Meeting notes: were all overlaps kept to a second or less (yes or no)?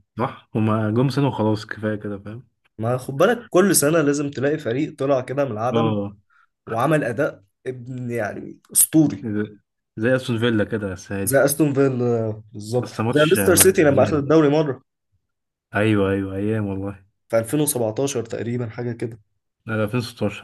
no